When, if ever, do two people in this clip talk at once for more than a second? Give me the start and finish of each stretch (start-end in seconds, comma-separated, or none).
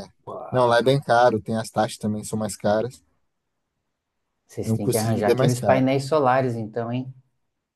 4.6-5.9